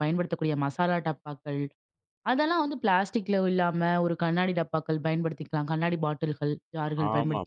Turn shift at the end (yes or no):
yes